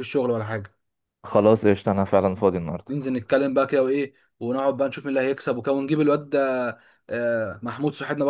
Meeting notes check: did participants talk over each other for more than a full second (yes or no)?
no